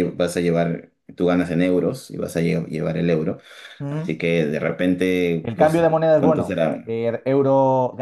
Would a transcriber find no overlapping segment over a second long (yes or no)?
no